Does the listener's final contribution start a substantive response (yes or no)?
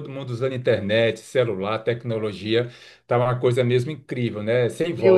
yes